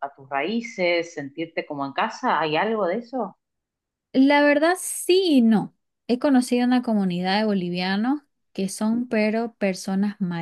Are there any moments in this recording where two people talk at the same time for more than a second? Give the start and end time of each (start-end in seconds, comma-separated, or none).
none